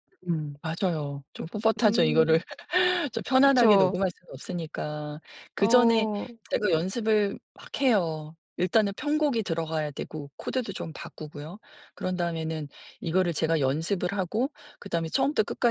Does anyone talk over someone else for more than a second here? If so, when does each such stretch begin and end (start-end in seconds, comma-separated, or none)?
none